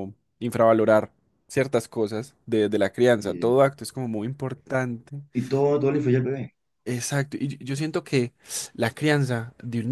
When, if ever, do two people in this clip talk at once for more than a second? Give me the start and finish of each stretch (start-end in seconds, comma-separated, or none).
none